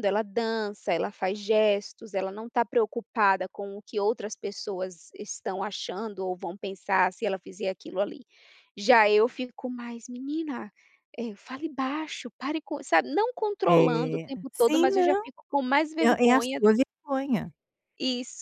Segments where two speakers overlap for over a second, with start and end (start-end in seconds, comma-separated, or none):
13.7-15.2